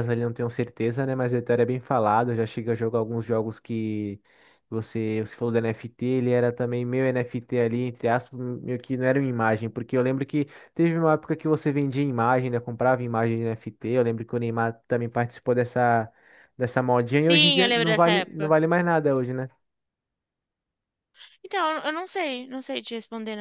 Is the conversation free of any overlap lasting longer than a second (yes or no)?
no